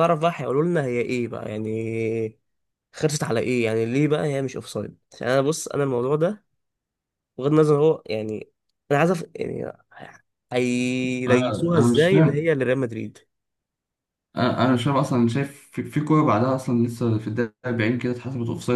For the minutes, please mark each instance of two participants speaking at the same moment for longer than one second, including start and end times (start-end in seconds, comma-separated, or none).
11.3-12.5